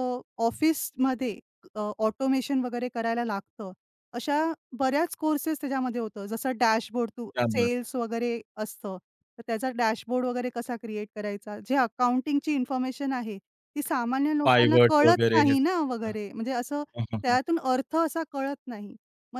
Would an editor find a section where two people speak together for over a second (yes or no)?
yes